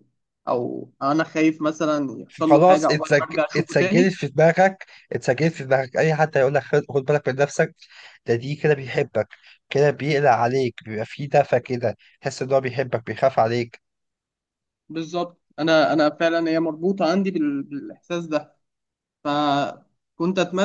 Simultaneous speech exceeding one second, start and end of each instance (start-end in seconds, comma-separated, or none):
2.3-4.1